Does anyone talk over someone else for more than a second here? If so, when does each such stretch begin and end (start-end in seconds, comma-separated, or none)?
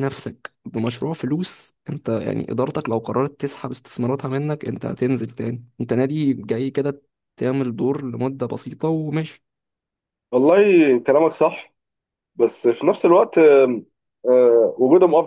none